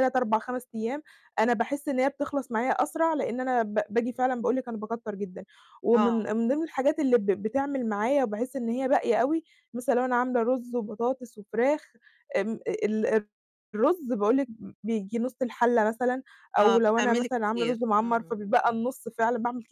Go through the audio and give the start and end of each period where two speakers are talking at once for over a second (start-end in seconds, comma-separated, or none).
16.6-18.4